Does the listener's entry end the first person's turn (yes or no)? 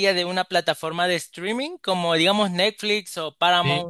no